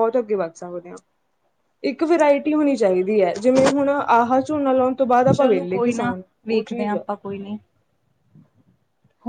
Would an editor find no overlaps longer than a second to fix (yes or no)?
no